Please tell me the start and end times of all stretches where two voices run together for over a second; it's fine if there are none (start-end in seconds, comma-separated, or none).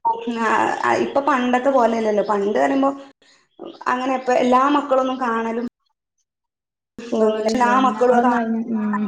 7.1-8.6